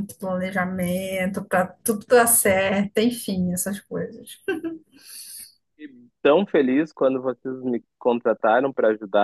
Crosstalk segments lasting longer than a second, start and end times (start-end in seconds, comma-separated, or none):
none